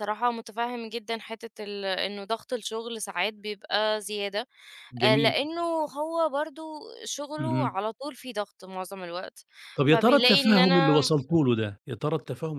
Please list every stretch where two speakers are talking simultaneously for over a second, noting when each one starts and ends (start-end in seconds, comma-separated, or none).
9.9-11.1